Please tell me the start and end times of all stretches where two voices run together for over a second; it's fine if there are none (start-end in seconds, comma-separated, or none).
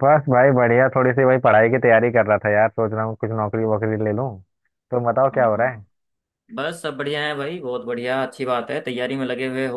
none